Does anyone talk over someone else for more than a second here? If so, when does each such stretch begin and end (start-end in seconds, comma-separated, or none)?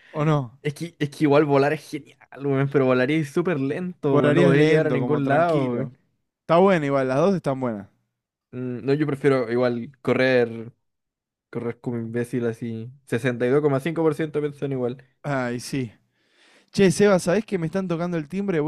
4.0-5.9